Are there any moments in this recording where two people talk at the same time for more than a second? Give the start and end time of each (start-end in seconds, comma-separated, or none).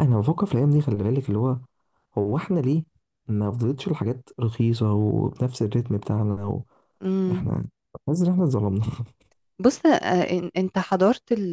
none